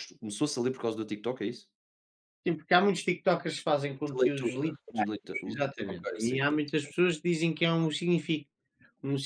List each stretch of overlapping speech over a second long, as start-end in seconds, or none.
4.1-6.6